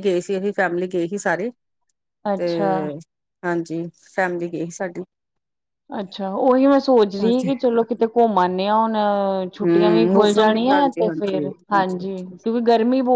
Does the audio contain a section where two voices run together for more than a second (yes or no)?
yes